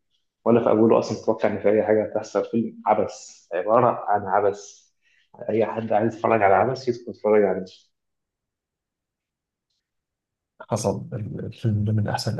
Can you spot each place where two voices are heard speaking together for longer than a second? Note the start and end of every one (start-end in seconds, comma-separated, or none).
none